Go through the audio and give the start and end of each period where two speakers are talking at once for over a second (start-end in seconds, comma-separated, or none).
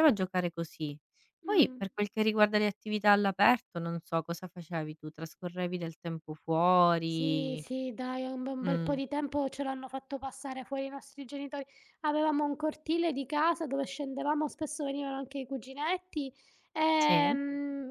none